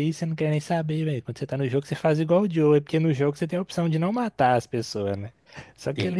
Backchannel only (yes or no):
yes